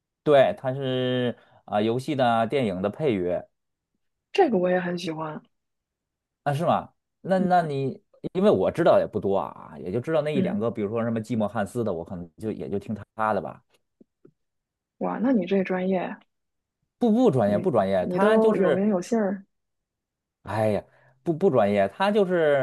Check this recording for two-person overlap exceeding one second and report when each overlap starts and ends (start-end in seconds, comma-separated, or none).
17.4-18.9